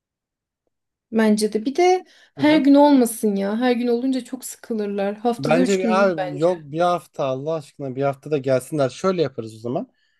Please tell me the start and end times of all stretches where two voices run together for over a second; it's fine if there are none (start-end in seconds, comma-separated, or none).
5.4-6.6